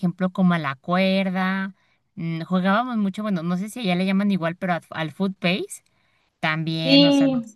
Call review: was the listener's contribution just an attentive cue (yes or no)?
yes